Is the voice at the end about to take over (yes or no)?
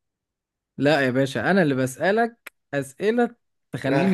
yes